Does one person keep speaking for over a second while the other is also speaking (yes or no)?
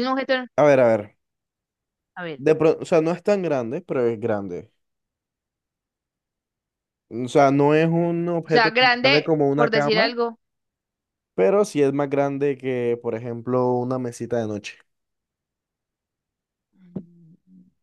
yes